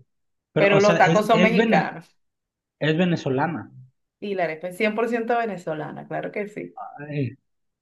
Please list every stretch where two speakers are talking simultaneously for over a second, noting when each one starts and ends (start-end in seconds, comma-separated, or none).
0.5-1.9